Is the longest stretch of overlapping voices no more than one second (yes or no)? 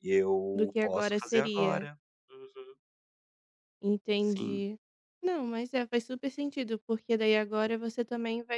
no